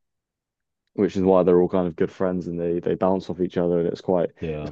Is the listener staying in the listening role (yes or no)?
yes